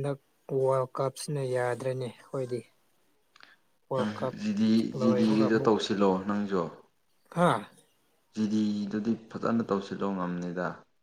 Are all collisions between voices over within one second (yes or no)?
yes